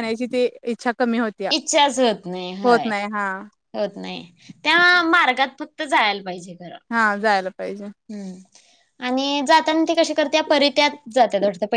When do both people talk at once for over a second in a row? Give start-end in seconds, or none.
none